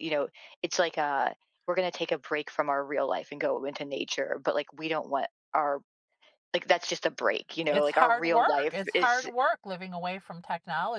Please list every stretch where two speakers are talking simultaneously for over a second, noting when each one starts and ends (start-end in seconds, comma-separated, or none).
7.7-9.3